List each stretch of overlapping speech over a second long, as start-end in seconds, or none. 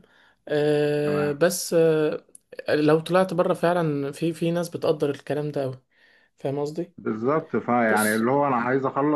none